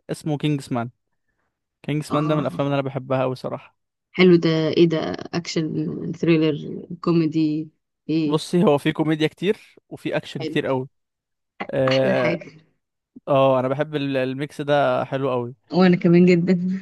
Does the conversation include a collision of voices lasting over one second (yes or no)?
no